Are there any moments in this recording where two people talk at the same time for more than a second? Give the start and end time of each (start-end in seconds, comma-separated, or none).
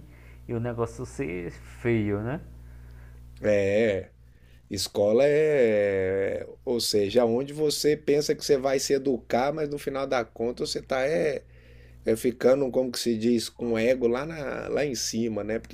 none